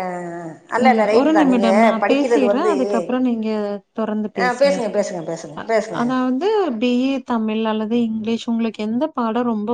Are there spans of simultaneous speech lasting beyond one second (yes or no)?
yes